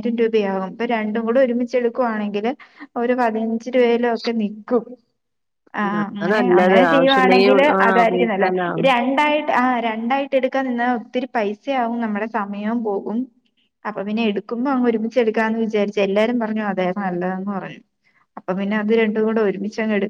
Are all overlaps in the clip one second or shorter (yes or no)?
no